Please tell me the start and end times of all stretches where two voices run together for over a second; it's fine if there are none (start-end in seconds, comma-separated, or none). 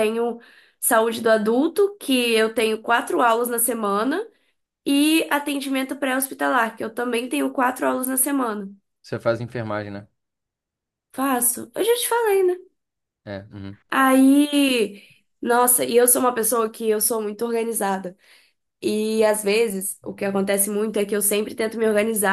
none